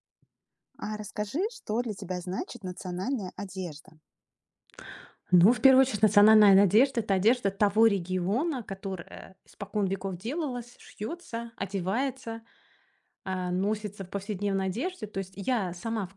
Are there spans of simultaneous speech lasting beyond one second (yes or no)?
no